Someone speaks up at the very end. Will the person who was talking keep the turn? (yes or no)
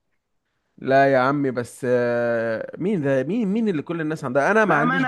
no